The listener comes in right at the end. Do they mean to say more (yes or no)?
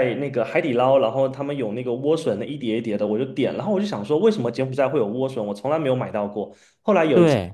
no